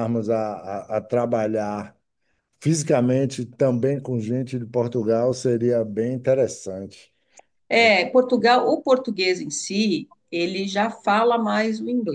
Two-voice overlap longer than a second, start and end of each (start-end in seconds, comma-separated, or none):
none